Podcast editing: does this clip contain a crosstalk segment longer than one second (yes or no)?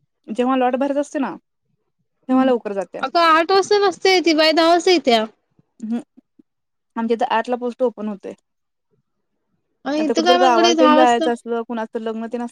yes